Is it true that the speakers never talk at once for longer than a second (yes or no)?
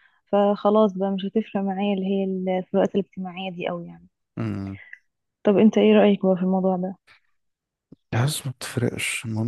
yes